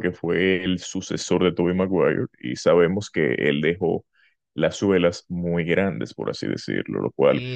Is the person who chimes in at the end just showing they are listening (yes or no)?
no